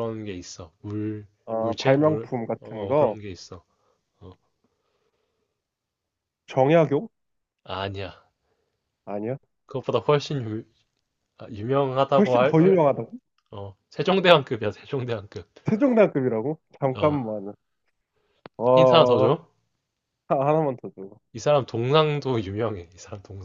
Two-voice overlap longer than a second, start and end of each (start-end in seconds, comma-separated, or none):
1.5-3.2